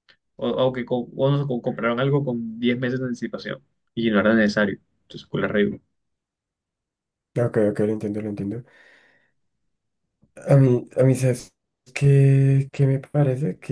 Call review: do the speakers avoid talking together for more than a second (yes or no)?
yes